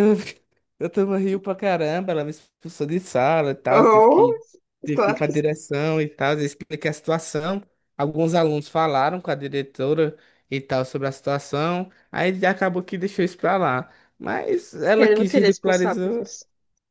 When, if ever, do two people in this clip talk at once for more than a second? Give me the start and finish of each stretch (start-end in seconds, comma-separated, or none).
15.0-16.2